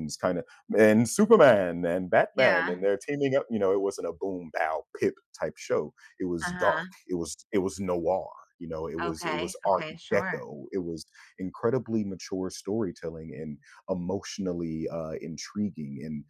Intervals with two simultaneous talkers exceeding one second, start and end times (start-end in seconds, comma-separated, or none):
9.0-10.4